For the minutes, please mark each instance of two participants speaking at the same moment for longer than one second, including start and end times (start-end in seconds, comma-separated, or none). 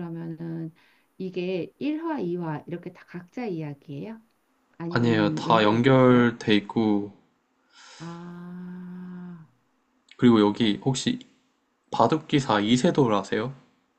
4.9-6.3